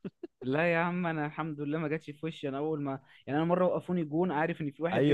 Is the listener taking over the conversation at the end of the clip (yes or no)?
yes